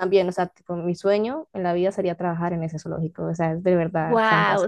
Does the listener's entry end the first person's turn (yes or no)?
yes